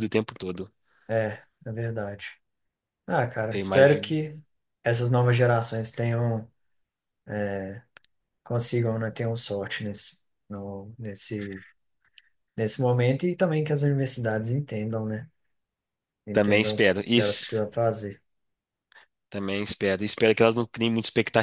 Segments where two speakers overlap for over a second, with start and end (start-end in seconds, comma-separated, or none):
16.3-17.5